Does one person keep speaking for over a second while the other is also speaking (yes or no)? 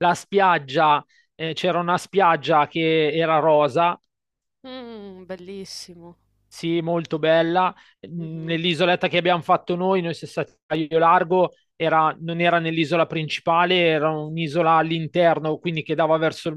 no